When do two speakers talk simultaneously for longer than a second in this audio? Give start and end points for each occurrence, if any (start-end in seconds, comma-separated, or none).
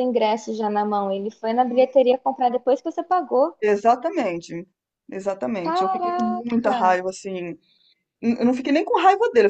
5.6-7.0